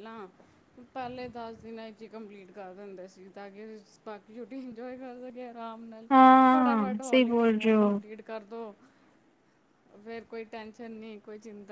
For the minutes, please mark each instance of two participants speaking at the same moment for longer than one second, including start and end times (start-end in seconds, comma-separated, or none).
6.5-7.9